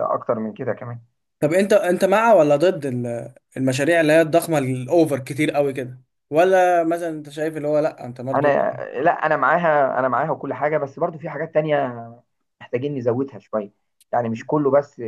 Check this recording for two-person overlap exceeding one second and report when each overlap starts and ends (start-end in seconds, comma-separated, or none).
none